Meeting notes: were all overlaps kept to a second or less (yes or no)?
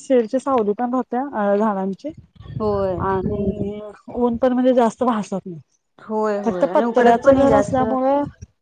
no